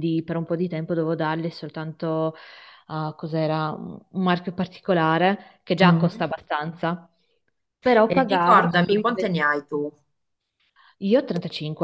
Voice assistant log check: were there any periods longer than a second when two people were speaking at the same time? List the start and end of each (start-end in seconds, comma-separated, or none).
8.1-9.3